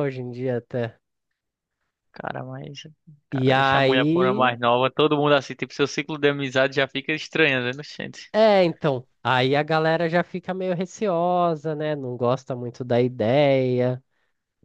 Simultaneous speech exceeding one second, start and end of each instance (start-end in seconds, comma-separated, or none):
3.3-4.6